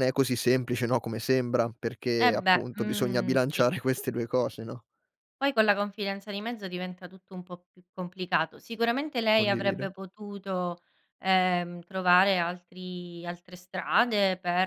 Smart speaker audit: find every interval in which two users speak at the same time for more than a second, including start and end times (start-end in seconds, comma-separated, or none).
2.2-3.7